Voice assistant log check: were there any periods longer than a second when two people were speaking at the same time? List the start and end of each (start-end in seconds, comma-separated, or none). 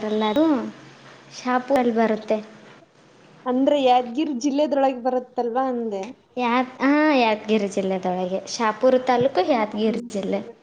none